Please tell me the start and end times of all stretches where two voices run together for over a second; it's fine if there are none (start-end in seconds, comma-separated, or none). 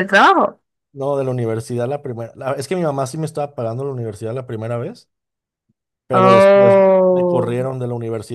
6.2-7.6